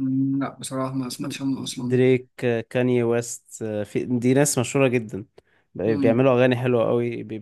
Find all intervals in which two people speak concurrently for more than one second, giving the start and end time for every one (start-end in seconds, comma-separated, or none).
none